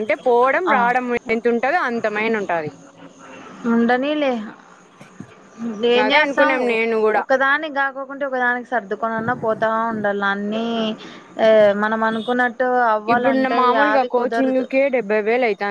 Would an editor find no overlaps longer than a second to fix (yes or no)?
no